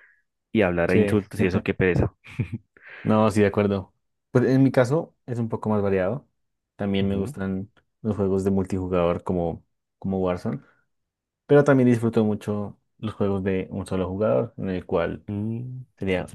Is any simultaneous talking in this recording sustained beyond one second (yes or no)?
no